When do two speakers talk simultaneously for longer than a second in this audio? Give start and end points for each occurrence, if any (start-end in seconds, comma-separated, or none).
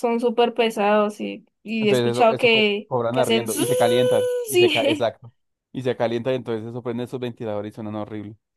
1.8-3.6